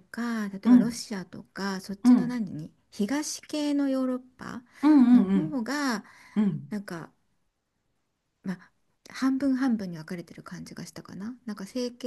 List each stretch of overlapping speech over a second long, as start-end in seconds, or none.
none